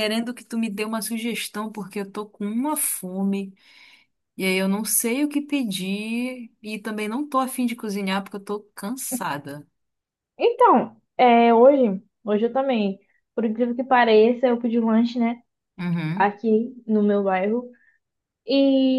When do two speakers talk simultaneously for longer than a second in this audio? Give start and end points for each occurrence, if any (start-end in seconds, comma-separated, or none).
none